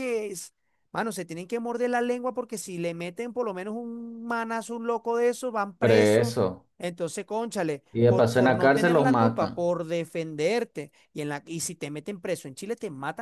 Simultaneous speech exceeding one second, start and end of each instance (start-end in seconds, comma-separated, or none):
7.9-9.7